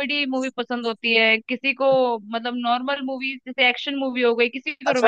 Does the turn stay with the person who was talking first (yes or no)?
no